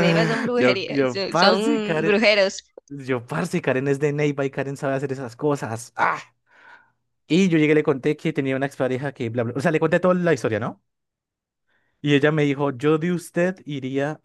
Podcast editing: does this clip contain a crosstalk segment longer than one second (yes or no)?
yes